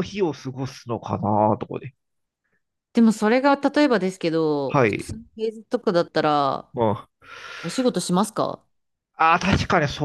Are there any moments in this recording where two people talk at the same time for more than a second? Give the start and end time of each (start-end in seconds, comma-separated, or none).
none